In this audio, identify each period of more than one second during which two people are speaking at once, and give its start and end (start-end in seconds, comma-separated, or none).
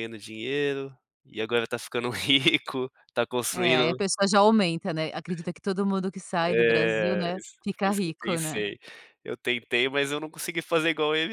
6.4-8.7